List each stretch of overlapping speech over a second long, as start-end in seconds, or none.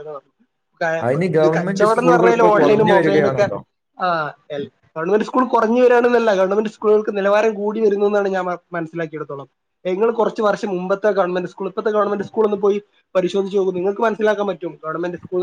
1.4-3.5